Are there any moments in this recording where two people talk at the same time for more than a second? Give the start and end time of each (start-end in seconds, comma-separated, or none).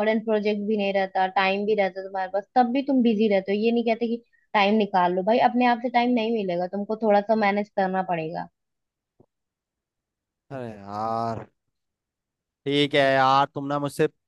none